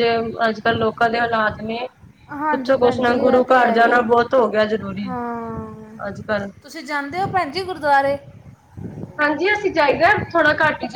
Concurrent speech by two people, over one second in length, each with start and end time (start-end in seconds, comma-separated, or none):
2.5-4.0